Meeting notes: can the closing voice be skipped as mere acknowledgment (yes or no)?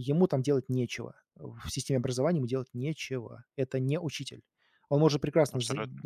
yes